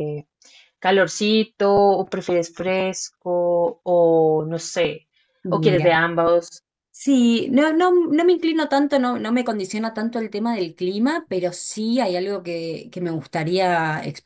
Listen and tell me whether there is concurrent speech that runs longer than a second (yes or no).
no